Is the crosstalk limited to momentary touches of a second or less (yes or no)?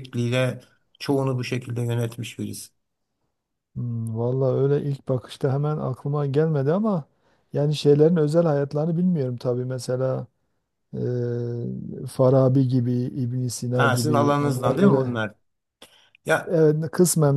no